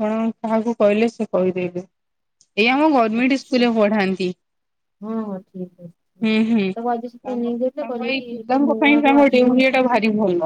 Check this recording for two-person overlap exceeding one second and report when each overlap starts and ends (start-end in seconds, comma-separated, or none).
7.3-9.8